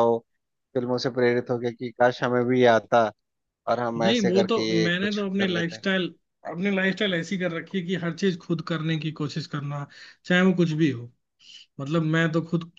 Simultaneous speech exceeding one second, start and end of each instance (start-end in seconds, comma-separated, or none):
4.0-5.8